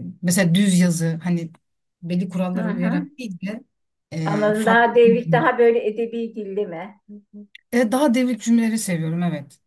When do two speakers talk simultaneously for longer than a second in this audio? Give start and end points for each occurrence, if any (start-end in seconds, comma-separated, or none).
4.2-5.5